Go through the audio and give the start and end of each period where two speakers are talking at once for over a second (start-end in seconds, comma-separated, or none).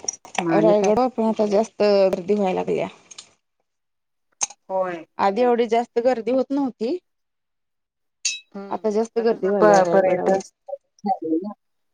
8.7-10.4